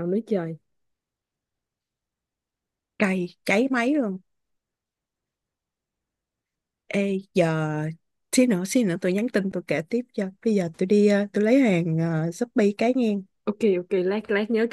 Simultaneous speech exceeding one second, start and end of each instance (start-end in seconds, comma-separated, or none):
none